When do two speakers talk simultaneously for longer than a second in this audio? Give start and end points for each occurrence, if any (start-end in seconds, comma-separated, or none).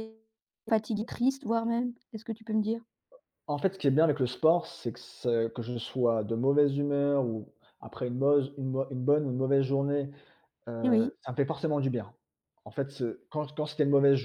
none